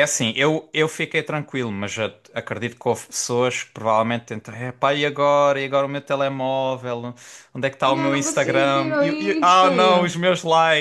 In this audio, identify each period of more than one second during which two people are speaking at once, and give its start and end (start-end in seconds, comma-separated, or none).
8.0-10.2